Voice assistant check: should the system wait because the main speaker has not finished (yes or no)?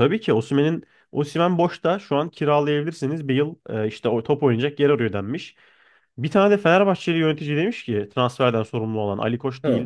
yes